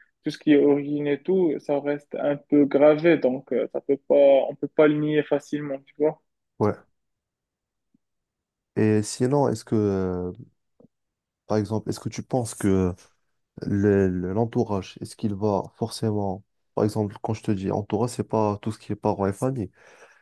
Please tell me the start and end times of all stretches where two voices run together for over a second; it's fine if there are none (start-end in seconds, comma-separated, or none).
none